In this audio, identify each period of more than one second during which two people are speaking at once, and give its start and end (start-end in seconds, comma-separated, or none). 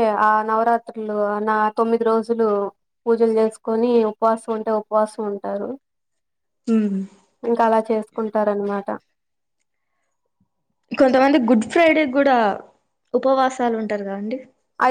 none